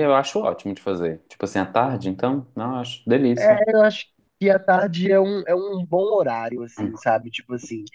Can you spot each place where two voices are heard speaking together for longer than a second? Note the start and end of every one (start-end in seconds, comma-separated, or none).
none